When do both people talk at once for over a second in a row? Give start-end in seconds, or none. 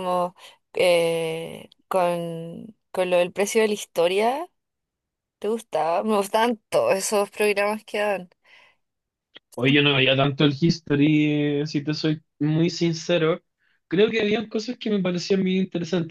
none